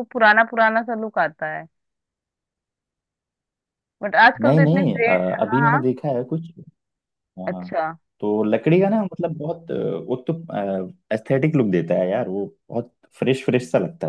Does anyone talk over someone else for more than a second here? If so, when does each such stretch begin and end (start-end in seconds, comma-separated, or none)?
4.4-5.8